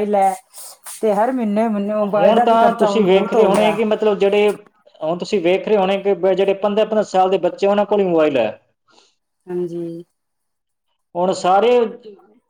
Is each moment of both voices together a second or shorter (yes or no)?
no